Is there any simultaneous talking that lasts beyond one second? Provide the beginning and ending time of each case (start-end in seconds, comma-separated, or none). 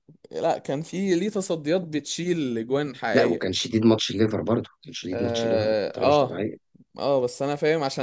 5.1-6.4